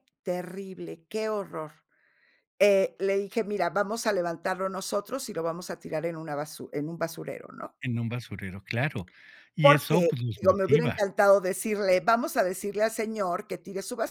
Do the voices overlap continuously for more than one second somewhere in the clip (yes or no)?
yes